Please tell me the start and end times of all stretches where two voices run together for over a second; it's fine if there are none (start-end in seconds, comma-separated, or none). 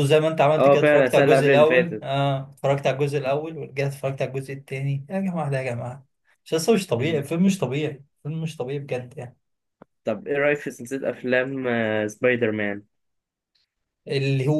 0.6-2.1